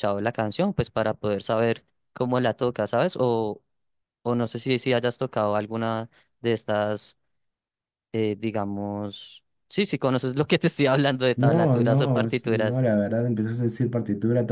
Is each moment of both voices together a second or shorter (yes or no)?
no